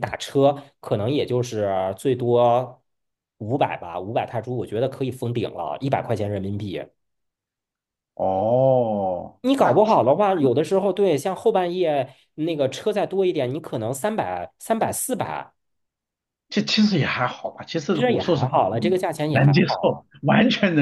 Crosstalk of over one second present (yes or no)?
yes